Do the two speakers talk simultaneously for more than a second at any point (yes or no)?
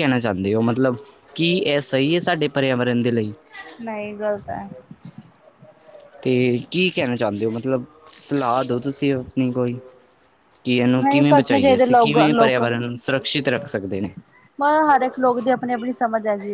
yes